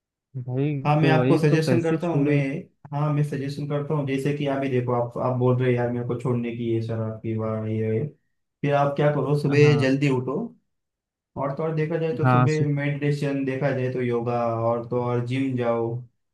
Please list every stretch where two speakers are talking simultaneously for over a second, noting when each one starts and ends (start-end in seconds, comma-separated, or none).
0.9-2.4